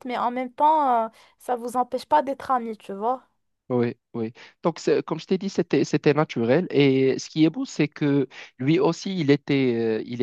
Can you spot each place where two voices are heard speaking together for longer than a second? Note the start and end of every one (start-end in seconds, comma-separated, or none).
none